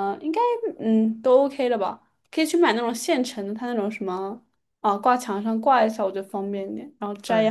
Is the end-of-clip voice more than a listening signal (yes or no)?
yes